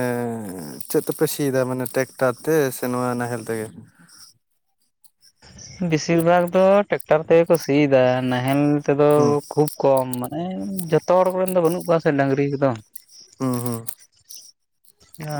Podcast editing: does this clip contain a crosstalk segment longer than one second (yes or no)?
no